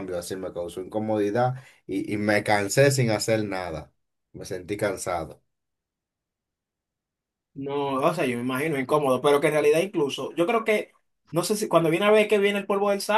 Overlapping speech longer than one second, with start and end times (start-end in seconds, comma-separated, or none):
none